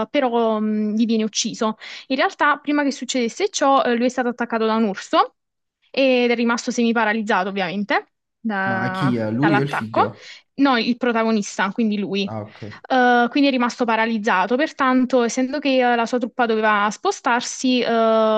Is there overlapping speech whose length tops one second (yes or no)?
yes